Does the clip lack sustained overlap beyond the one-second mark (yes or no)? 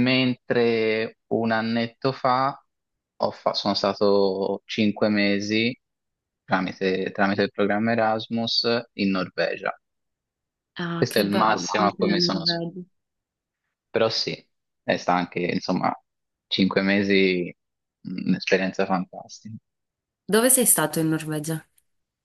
no